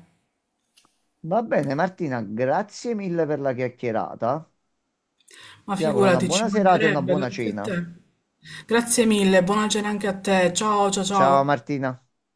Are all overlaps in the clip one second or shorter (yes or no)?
no